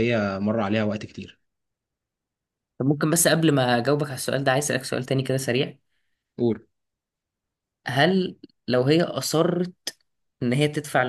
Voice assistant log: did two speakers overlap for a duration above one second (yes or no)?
no